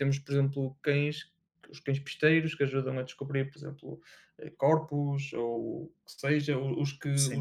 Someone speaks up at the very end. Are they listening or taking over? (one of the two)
listening